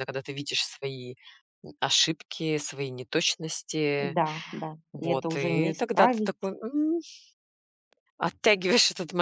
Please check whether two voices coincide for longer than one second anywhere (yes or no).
yes